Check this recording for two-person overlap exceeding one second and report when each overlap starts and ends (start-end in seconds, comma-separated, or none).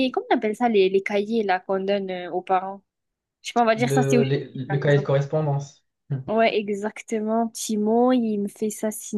3.8-5.1